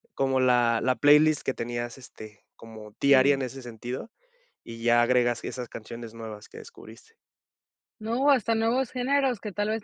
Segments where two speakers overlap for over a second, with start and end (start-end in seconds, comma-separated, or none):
none